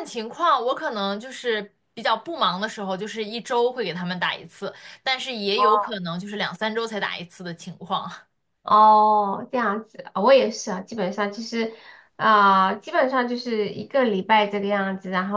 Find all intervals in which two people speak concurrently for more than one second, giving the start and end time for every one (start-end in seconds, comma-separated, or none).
none